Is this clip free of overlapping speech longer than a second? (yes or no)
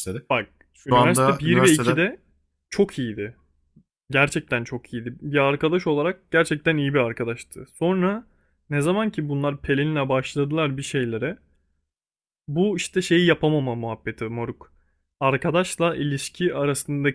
no